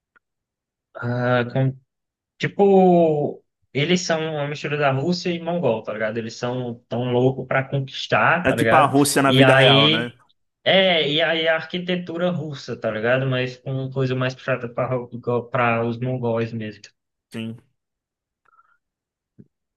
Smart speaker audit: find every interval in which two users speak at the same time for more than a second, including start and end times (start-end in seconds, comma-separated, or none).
8.4-10.1